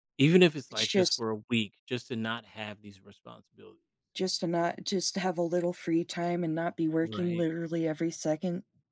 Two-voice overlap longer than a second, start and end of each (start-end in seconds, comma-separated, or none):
none